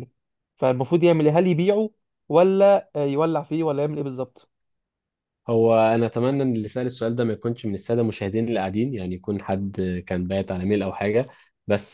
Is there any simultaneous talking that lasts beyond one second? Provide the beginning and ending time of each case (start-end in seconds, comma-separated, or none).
none